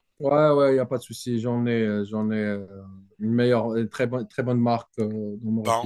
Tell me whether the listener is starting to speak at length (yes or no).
yes